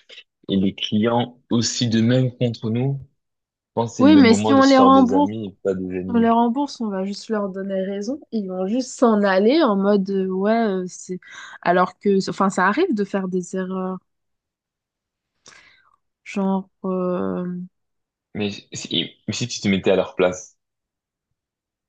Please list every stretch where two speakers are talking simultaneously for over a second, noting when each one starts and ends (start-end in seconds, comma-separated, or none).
4.0-5.3